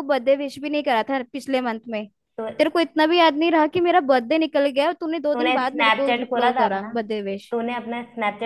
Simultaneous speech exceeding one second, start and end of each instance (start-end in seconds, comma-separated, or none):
5.3-6.9